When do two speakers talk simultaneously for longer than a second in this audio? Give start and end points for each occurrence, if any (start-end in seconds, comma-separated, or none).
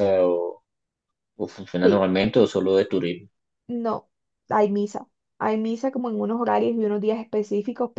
none